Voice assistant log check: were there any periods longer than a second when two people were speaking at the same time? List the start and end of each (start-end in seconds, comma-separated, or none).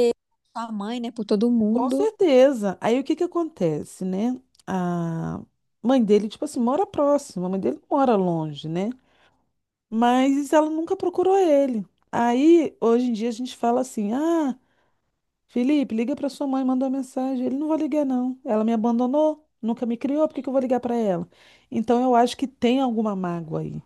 none